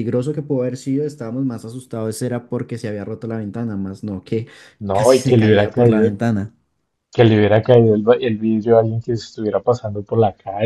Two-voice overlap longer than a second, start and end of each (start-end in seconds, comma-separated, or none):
4.9-6.1